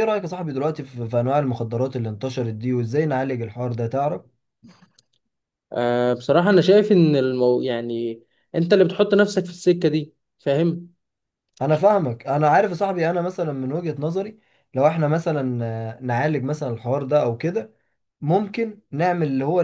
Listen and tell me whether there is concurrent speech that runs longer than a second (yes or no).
no